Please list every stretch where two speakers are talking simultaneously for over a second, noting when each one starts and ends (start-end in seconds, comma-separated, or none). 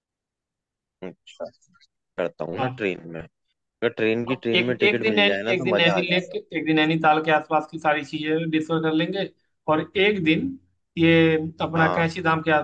4.3-6.3